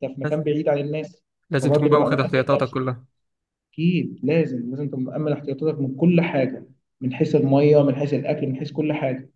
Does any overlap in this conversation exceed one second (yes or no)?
yes